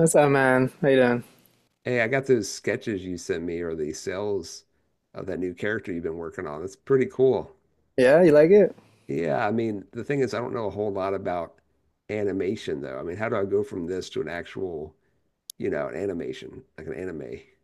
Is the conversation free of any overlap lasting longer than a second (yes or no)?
yes